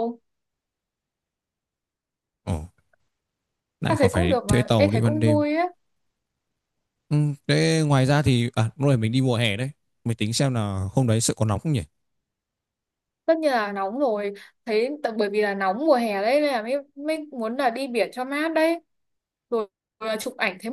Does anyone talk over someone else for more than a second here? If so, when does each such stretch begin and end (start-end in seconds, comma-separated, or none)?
3.9-5.4